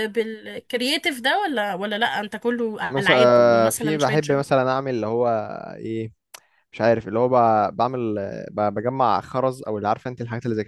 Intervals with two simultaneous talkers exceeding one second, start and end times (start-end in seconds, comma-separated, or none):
2.9-4.4